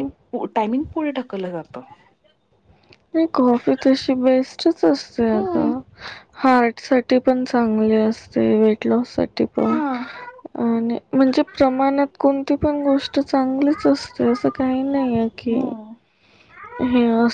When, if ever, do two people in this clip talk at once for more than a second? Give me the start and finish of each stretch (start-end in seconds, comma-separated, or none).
none